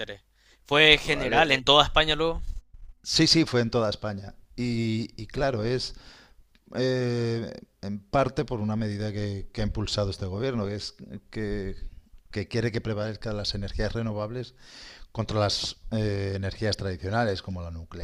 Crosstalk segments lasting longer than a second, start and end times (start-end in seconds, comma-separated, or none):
none